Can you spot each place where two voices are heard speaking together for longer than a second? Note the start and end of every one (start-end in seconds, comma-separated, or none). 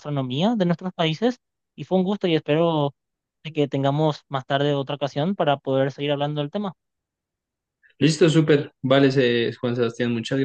none